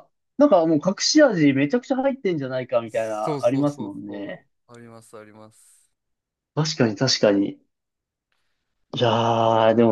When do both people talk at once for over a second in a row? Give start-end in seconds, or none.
2.9-4.5